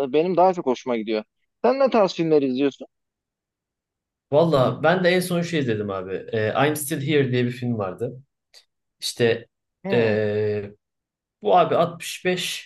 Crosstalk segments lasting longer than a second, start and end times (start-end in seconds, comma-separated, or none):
none